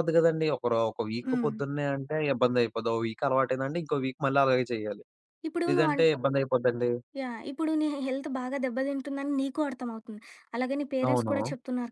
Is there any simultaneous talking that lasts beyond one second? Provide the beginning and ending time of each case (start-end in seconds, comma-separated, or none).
none